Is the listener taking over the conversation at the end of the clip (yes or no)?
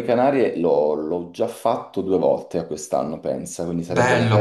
yes